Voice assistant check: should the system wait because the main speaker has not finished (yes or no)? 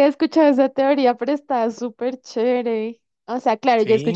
yes